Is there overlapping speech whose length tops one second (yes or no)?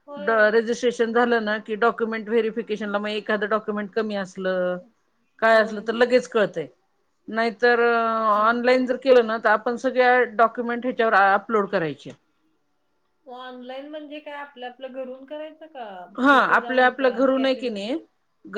yes